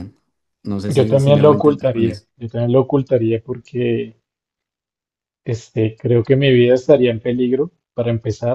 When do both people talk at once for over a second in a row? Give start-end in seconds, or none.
0.9-2.2